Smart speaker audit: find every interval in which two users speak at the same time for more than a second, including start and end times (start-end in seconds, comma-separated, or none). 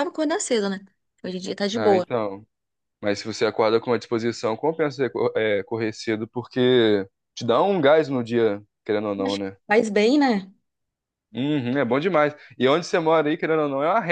none